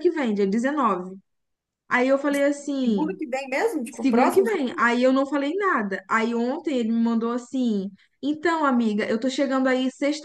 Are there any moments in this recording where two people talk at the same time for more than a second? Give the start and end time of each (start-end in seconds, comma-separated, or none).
none